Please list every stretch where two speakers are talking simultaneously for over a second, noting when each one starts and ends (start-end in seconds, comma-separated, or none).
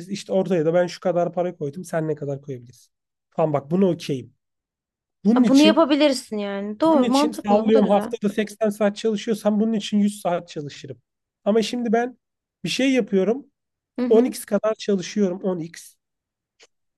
6.8-8.1